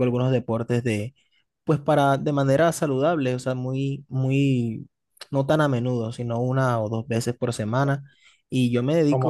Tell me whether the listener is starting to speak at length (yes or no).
no